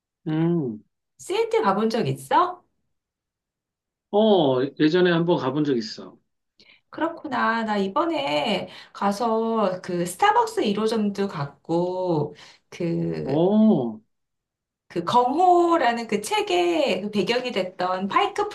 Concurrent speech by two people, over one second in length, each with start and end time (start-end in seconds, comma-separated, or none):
none